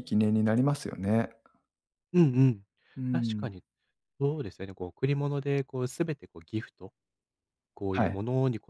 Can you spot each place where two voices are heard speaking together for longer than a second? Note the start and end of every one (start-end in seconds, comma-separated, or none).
none